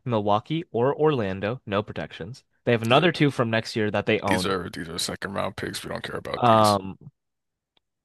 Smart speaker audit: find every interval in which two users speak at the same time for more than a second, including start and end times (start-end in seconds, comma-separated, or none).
none